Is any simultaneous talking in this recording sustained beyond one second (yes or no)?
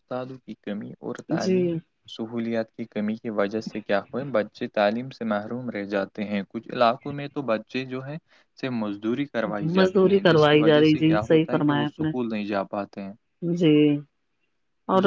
yes